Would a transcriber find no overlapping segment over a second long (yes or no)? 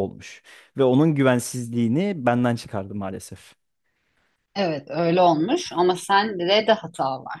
yes